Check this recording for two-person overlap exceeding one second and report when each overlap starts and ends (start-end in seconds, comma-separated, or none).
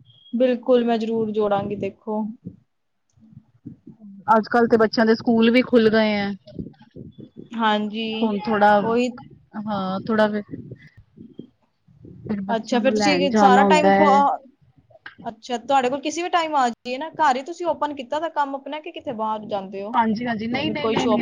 12.6-13.9